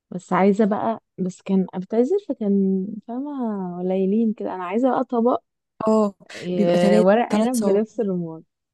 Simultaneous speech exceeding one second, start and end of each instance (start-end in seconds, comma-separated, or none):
6.5-7.8